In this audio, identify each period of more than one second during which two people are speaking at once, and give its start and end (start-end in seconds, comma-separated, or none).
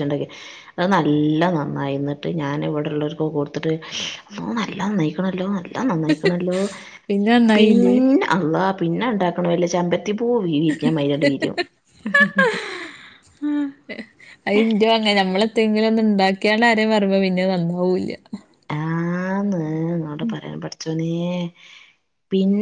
none